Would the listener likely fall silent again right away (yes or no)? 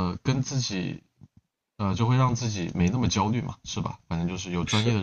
yes